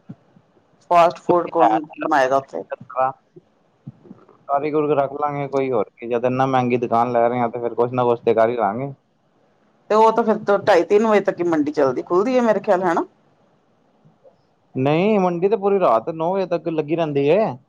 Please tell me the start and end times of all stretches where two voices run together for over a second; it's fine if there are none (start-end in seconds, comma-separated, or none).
none